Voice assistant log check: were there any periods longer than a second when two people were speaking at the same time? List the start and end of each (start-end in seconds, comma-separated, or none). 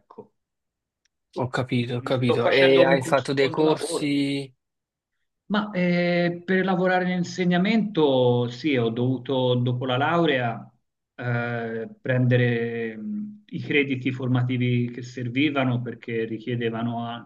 1.8-4.2